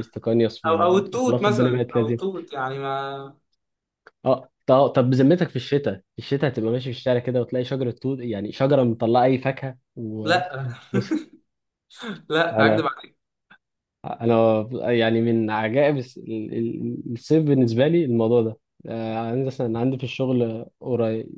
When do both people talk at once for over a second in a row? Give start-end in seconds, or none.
0.7-2.2